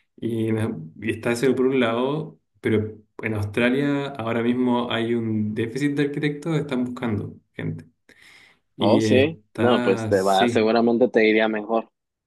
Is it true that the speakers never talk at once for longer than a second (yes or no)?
no